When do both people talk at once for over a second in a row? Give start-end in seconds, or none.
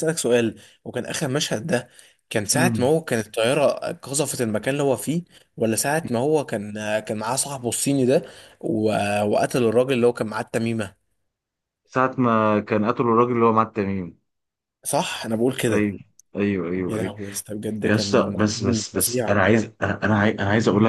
17.8-19.4